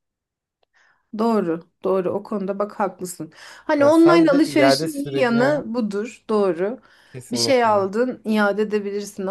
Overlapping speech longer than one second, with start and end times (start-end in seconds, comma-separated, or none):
3.8-5.7